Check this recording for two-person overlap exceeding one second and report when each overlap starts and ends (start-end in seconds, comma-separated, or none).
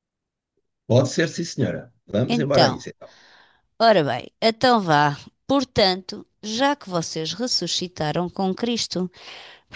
none